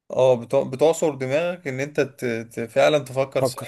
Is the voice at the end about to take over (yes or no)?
no